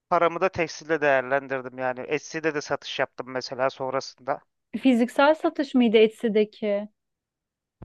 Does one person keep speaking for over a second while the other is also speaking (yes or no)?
no